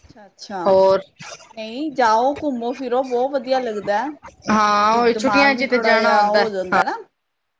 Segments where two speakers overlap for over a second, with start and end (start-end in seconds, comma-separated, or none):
4.5-6.4